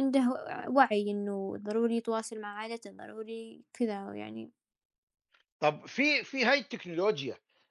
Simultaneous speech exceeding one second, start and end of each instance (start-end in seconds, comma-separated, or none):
none